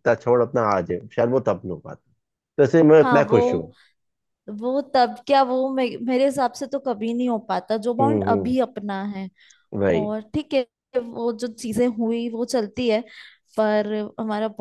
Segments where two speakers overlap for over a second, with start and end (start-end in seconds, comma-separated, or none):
none